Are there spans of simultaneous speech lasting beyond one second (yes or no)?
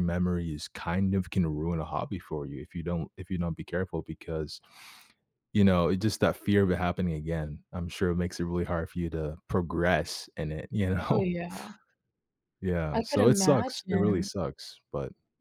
yes